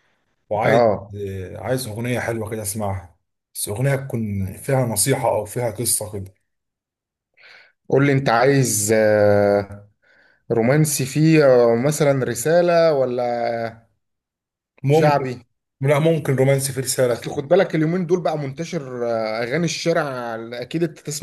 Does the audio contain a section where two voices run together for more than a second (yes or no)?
no